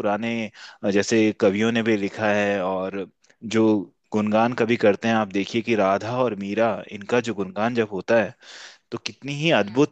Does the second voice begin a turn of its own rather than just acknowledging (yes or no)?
no